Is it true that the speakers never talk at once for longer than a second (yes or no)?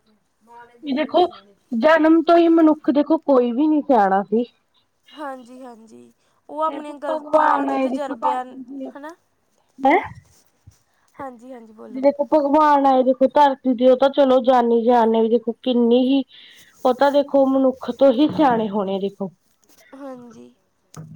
no